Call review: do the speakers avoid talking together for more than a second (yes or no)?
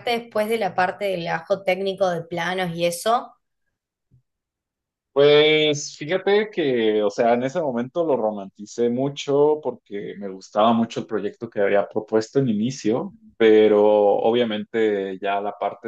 yes